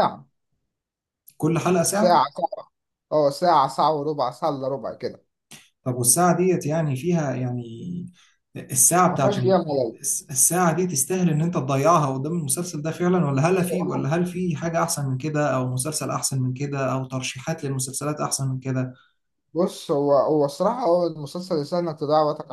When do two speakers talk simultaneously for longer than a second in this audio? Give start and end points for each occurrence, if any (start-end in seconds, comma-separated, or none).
none